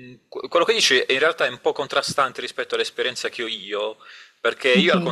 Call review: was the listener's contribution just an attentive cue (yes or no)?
yes